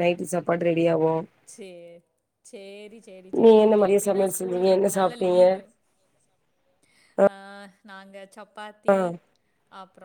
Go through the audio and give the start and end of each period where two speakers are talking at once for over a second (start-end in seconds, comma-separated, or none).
3.4-5.4